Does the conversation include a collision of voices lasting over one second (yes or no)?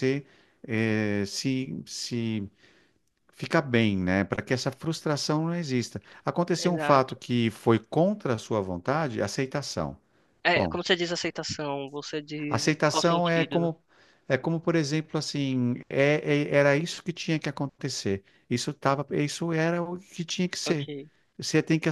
yes